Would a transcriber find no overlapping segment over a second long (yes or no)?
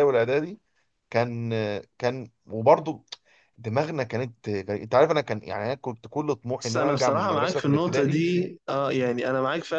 no